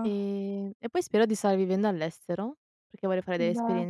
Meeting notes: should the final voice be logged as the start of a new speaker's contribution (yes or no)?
no